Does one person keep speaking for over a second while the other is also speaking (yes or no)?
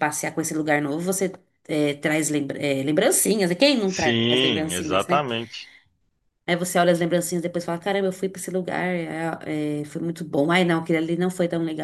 yes